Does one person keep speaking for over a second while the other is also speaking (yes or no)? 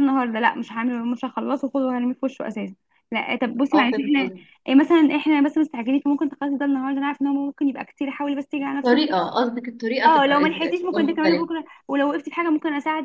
yes